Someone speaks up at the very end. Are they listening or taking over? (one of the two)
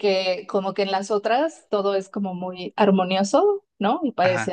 listening